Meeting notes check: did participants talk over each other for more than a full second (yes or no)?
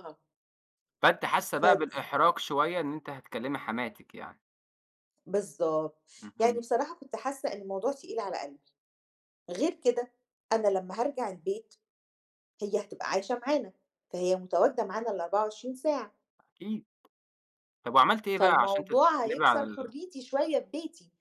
yes